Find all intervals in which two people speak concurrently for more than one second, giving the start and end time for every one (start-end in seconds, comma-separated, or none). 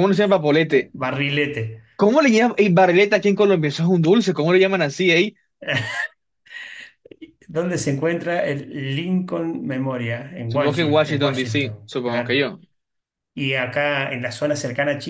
10.5-12.4